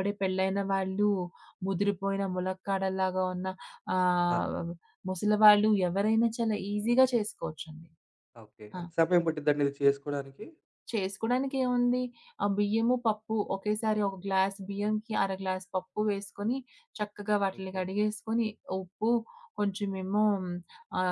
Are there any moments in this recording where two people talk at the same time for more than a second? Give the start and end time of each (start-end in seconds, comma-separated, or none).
none